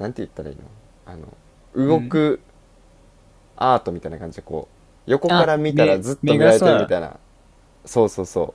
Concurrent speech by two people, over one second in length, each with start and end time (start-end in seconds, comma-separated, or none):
5.3-6.9